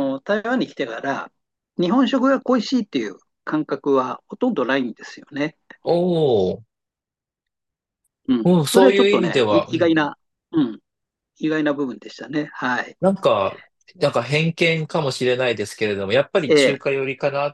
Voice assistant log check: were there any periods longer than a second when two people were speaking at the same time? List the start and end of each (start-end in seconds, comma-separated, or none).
8.4-10.1